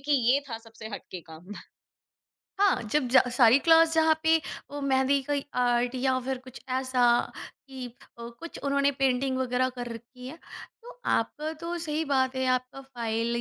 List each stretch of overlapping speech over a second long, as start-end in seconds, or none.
none